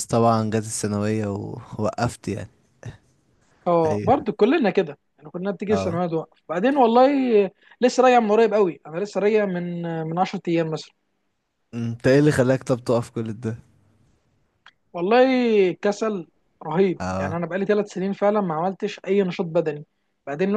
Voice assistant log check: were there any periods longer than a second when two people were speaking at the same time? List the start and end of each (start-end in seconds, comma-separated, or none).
none